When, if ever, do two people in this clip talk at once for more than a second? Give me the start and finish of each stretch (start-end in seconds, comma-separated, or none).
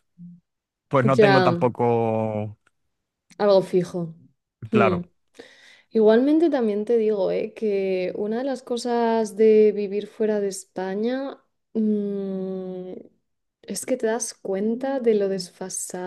none